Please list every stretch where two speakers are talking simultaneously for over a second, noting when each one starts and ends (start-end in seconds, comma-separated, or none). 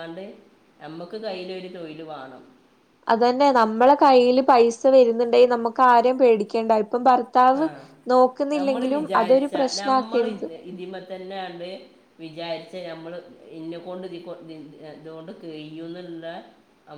none